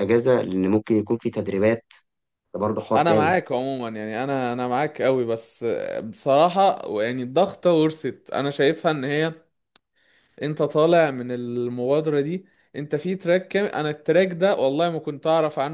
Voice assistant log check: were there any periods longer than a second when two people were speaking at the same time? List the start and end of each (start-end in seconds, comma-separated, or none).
none